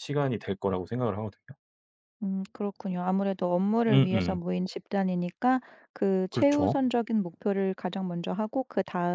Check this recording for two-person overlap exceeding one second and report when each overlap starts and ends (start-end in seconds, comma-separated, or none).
none